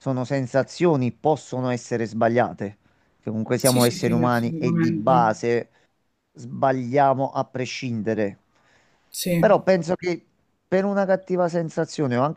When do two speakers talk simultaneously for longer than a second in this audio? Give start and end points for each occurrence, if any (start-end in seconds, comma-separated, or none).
3.6-5.1